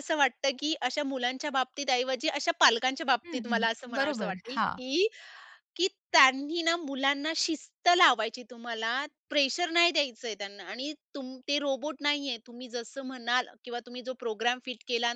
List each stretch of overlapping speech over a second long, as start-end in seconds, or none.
3.2-4.8